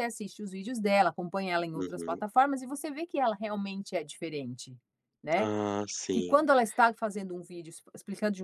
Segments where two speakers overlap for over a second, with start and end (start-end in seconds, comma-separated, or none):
none